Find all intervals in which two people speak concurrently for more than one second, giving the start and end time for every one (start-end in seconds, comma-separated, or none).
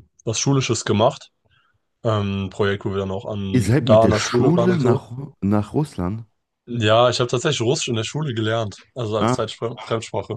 3.5-5.0